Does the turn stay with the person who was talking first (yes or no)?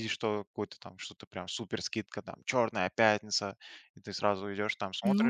no